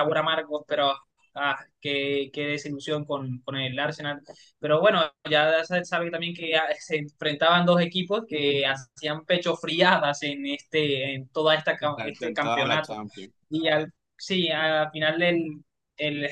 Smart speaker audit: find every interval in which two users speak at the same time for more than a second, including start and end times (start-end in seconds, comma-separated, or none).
11.8-13.0